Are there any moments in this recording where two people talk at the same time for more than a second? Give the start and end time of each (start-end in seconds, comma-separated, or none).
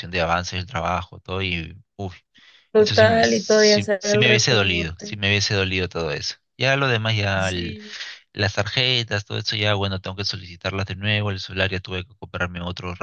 2.8-5.2